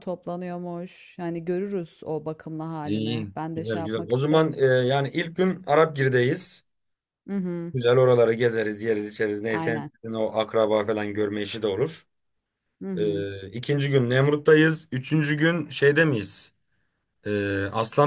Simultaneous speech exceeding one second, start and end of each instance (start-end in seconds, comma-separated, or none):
2.8-4.5